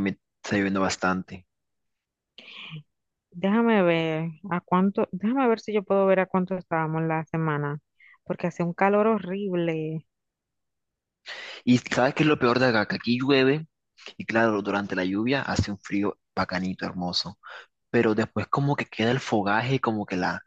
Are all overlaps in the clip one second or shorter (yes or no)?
yes